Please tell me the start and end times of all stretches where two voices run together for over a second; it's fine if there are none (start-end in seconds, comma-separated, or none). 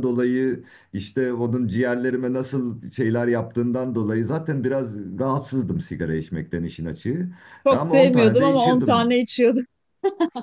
7.7-9.1